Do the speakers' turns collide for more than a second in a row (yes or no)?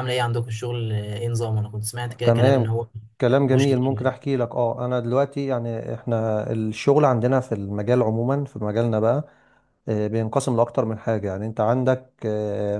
no